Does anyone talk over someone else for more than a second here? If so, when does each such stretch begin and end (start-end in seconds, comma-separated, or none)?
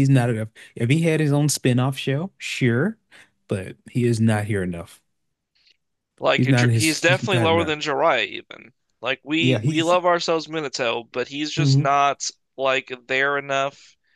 6.4-7.7